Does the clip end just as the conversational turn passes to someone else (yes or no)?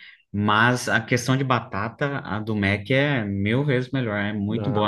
no